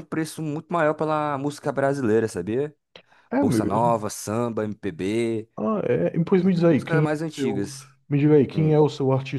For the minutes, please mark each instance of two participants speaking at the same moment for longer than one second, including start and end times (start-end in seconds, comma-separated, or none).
6.4-7.6